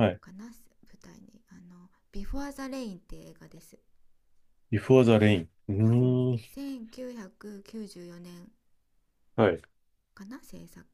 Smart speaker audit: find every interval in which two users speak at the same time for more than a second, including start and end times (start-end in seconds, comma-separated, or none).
none